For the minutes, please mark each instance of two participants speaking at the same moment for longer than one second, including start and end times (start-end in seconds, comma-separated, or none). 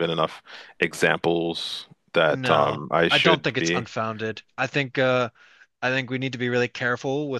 2.3-3.9